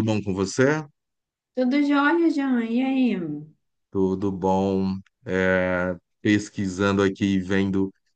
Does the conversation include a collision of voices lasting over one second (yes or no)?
no